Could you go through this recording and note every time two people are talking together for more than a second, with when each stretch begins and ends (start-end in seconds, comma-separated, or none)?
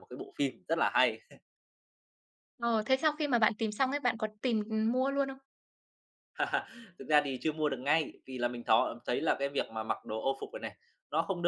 none